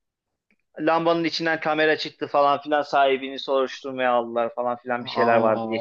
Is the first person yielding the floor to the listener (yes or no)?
yes